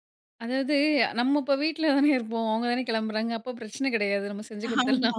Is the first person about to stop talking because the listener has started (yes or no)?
no